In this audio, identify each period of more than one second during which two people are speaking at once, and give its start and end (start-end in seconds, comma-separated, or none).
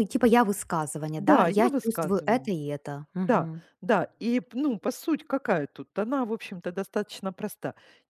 1.2-2.5